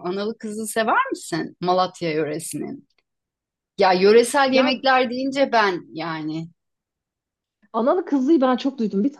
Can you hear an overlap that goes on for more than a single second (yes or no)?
no